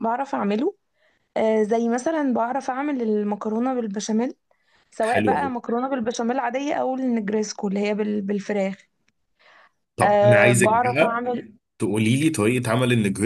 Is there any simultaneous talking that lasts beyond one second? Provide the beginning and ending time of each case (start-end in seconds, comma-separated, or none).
10.0-11.2